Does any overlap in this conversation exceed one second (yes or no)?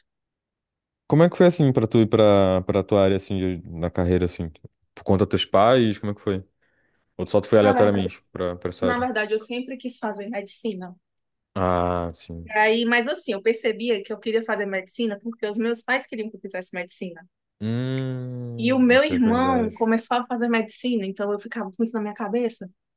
yes